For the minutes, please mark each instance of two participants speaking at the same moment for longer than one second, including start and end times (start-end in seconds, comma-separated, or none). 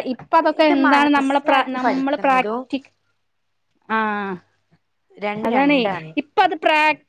0.6-2.6